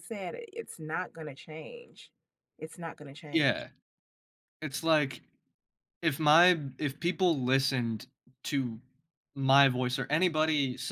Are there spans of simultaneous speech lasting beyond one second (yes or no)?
no